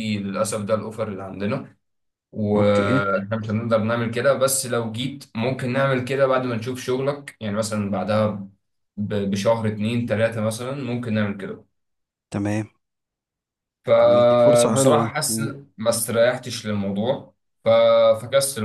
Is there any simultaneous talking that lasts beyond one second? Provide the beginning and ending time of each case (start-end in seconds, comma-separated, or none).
14.0-15.5